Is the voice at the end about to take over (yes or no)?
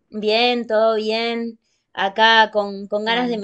no